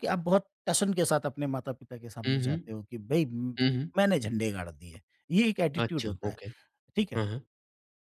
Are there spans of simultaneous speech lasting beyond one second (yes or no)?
no